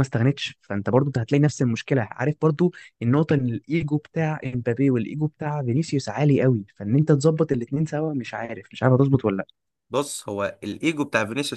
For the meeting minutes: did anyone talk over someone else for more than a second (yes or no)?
no